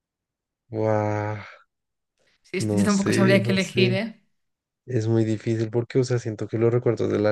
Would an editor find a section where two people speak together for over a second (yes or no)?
yes